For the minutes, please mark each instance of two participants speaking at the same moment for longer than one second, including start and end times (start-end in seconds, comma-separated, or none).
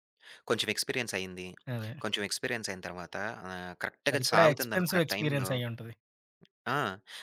4.1-5.5